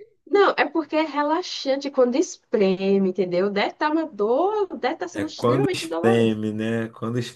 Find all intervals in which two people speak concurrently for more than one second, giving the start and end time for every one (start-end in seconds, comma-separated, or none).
5.1-6.4